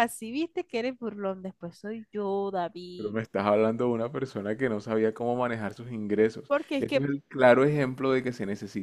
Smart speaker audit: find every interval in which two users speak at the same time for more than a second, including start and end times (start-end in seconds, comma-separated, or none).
none